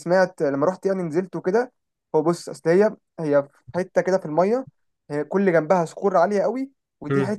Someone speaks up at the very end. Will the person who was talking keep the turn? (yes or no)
yes